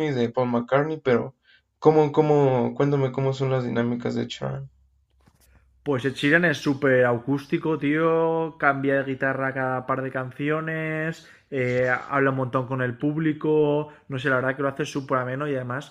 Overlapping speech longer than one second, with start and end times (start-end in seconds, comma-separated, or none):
none